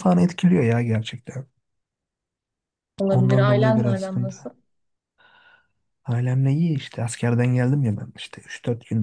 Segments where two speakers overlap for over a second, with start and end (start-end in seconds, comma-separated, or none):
3.1-4.3